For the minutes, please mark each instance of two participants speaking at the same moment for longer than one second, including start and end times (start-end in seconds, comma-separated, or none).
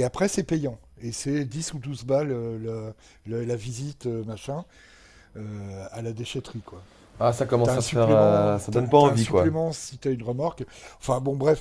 7.6-9.5